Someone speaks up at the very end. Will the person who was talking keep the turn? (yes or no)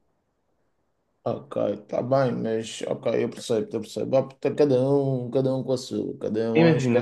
no